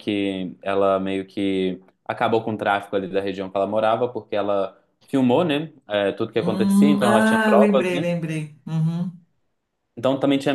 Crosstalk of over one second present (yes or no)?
yes